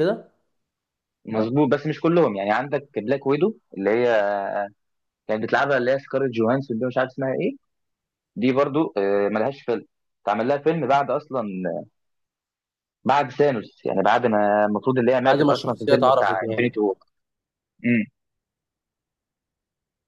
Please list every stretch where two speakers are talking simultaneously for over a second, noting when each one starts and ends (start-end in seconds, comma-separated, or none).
15.2-16.7